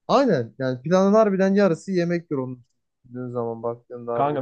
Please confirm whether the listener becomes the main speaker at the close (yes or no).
yes